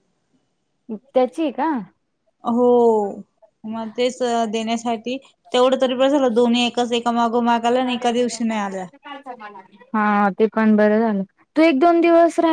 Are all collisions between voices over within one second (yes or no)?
yes